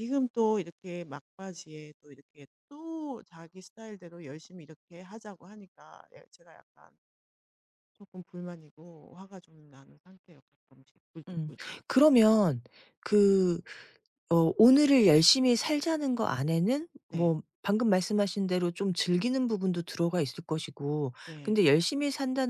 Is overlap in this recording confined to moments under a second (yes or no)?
yes